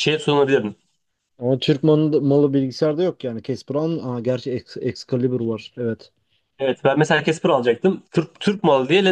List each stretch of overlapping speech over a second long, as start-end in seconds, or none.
none